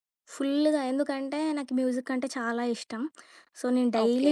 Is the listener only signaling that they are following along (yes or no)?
yes